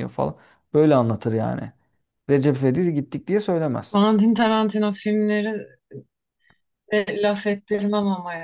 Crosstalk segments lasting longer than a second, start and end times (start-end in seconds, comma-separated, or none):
none